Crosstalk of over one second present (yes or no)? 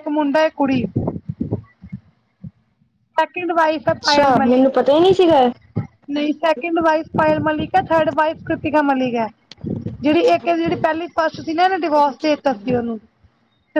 yes